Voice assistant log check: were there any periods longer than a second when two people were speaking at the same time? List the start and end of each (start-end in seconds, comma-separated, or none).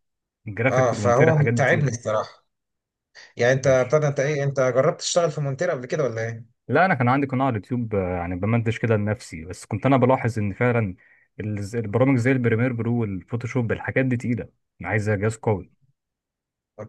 0.7-1.9